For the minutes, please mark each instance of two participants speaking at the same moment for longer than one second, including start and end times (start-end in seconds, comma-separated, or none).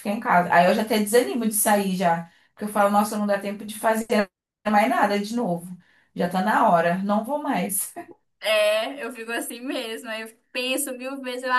none